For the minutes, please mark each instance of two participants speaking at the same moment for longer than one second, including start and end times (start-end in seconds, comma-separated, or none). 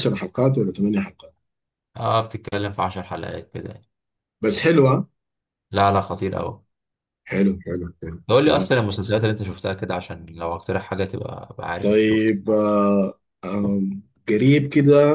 none